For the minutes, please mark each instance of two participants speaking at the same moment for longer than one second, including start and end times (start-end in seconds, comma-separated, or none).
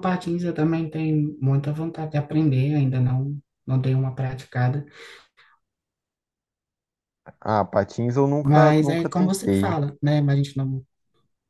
8.4-9.8